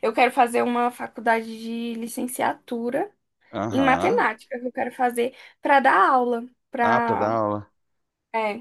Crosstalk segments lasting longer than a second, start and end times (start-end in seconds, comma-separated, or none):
none